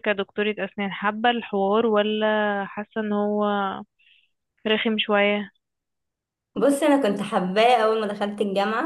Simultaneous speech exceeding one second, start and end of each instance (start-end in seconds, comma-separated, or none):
none